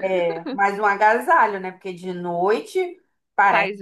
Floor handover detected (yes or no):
yes